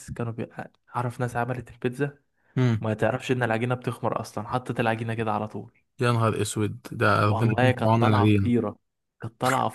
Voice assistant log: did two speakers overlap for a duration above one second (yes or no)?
yes